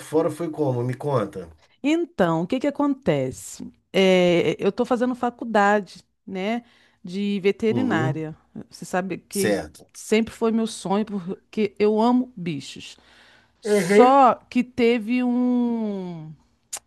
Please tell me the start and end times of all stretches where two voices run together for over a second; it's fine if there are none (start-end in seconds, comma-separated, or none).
none